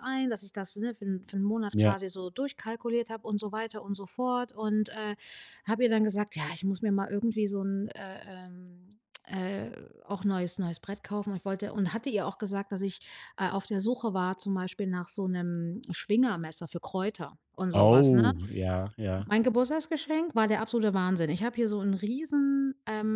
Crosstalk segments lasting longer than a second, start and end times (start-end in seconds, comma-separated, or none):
none